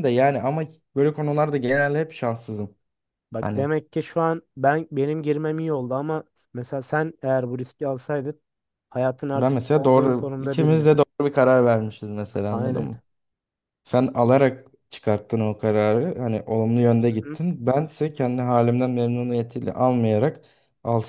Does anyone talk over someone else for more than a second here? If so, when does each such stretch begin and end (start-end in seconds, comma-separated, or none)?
9.3-10.9